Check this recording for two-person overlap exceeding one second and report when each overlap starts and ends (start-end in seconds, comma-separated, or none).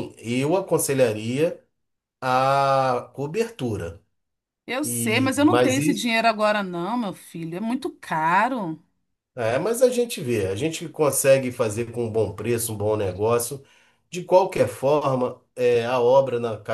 4.8-6.1